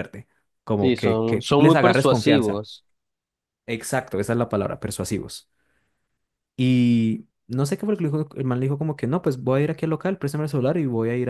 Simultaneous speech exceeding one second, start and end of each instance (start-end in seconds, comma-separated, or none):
0.8-2.6